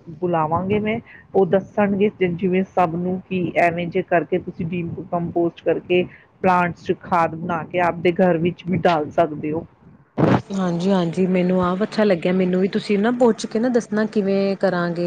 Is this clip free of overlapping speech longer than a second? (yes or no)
yes